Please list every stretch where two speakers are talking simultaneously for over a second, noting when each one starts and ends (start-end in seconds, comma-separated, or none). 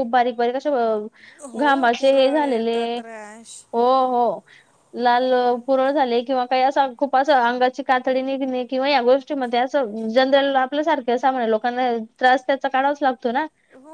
1.6-3.0